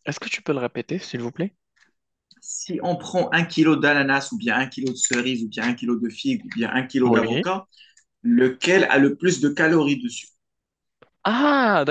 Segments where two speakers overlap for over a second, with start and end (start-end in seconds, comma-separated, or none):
none